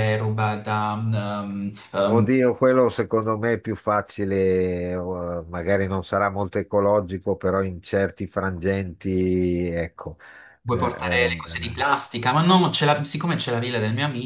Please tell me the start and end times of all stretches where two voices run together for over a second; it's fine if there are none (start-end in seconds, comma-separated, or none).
10.7-11.9